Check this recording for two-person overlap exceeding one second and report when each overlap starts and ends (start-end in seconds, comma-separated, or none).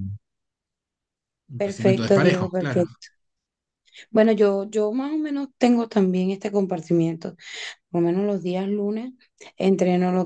1.6-2.8